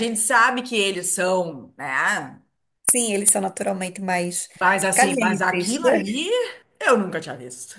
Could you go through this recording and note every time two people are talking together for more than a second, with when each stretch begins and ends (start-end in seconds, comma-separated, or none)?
4.9-6.3